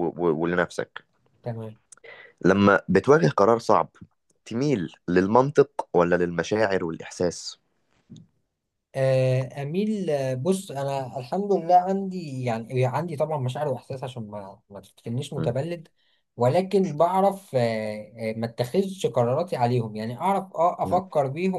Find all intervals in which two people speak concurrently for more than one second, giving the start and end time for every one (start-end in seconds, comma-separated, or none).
none